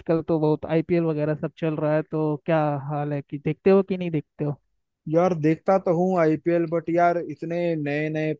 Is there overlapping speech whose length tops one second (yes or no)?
no